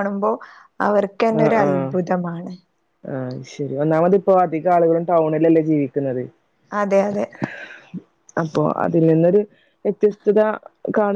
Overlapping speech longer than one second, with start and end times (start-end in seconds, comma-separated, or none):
none